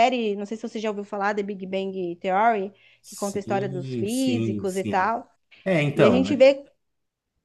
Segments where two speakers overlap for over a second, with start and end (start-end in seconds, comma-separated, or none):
3.0-5.1